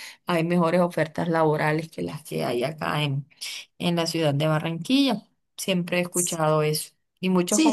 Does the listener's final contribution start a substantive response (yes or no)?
no